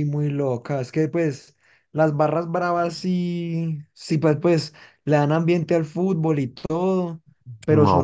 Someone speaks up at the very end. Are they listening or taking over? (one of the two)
taking over